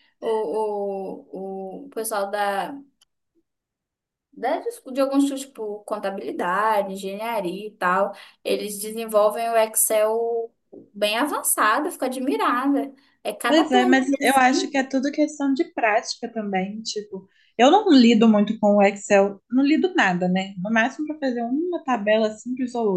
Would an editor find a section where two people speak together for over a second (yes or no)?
yes